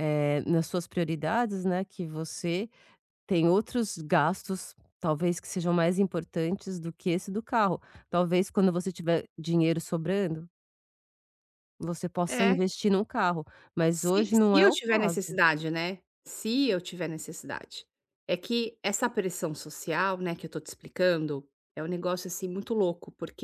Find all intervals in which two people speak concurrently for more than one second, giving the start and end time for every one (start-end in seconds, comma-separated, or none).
13.9-15.2